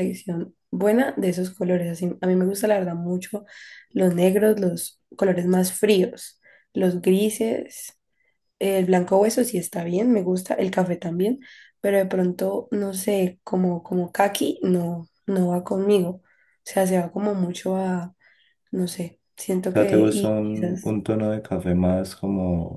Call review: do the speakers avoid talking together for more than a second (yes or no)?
no